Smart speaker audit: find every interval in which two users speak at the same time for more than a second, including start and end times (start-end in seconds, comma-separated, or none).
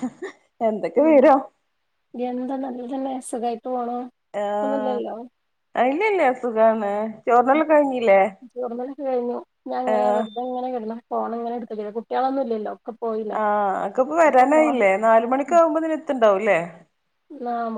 none